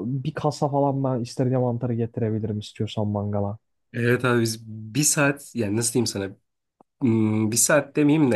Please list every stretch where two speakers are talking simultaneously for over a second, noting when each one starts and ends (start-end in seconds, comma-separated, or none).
none